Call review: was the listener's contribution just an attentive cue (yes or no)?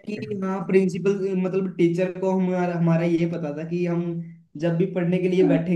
yes